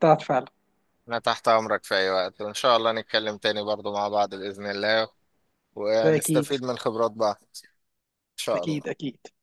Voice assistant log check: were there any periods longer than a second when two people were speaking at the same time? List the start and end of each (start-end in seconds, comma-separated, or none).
none